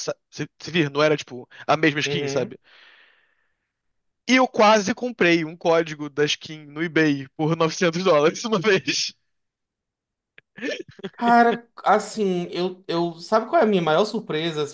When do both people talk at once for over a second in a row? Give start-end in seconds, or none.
none